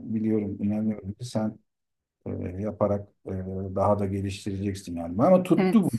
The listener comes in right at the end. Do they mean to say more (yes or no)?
no